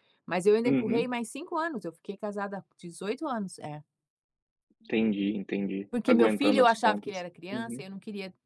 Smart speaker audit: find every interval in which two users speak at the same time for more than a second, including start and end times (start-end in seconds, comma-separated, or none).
5.9-7.8